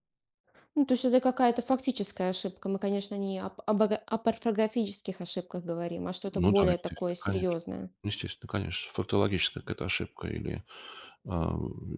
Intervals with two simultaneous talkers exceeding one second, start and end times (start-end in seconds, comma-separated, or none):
6.3-7.6